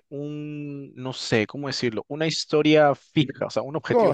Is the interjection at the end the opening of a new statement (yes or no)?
yes